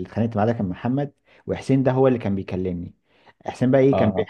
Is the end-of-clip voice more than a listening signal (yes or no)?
no